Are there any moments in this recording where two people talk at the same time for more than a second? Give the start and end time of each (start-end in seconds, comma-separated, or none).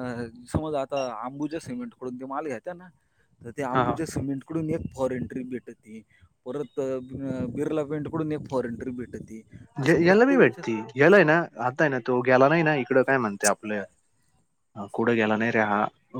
none